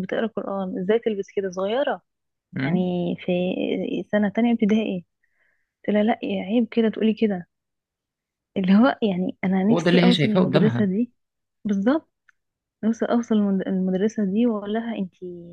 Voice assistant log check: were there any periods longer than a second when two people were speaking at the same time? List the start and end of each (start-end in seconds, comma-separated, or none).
9.7-10.9